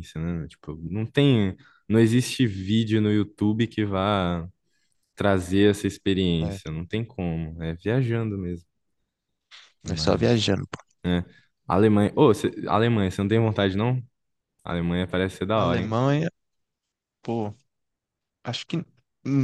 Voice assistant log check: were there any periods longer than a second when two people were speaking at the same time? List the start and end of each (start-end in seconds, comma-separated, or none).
none